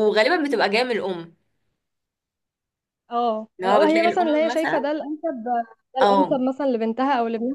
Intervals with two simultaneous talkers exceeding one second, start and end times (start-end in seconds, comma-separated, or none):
3.6-4.9